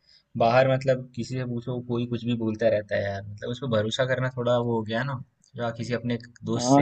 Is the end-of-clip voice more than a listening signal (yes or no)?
yes